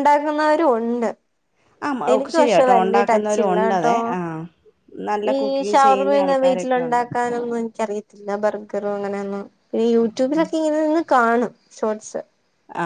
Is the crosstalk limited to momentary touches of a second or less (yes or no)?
no